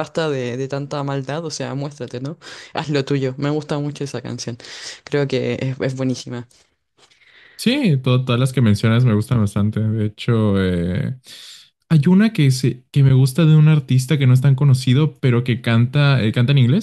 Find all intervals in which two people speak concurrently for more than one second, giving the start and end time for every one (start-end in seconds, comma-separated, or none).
none